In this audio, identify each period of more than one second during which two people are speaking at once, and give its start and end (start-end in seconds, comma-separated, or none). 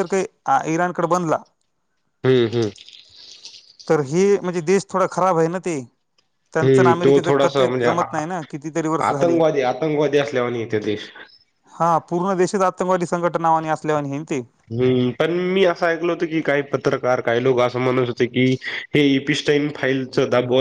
6.6-8.2